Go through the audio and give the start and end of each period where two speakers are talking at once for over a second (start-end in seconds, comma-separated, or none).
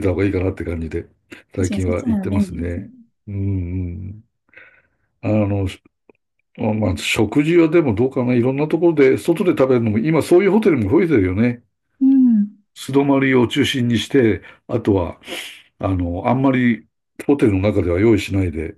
1.6-2.9